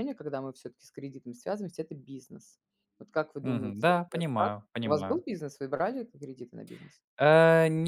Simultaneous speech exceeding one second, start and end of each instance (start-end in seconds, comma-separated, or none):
3.4-5.2